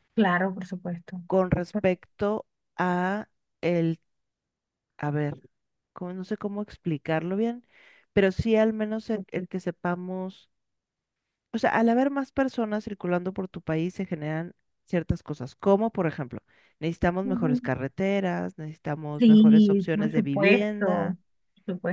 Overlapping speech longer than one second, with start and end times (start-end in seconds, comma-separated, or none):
19.2-21.2